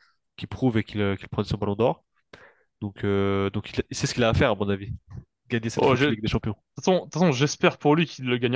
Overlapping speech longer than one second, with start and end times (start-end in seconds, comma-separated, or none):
none